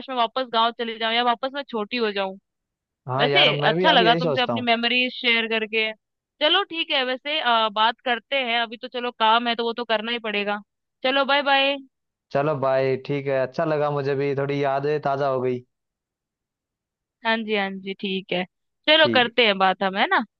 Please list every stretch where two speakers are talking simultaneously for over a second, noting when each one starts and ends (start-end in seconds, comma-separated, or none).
3.2-4.7